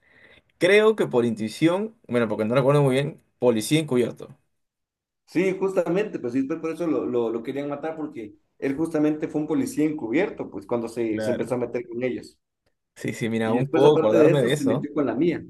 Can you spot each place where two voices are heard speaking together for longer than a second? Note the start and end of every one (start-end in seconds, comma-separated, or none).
13.4-14.9